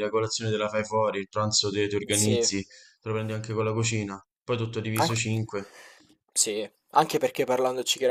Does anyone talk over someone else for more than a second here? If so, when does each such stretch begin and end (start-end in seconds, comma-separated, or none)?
none